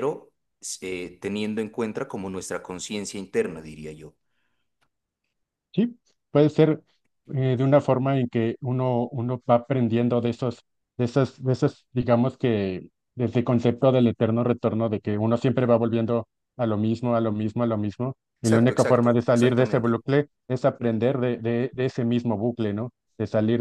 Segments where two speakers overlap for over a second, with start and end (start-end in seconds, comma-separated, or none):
18.4-19.9